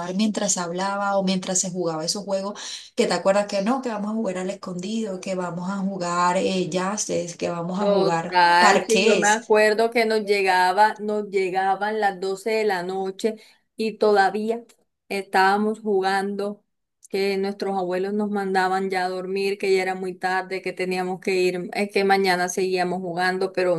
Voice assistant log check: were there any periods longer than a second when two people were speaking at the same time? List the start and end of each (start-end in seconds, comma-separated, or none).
7.8-9.4